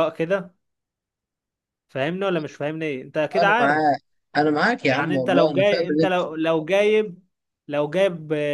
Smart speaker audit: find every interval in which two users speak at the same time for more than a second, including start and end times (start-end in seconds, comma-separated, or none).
4.8-6.2